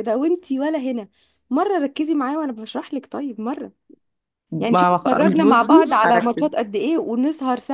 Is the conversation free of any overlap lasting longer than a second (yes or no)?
no